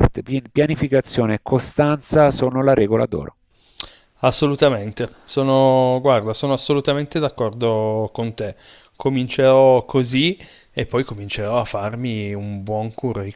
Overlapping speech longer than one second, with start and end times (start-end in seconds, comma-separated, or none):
none